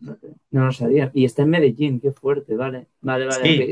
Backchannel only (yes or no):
yes